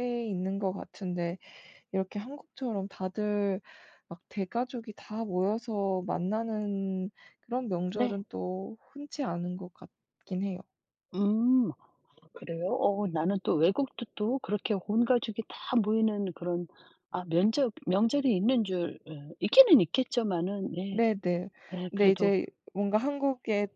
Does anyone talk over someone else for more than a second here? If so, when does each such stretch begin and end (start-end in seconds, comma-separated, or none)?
none